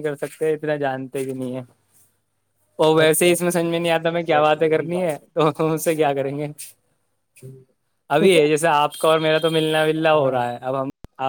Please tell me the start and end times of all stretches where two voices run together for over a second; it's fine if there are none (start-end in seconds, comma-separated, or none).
3.0-5.2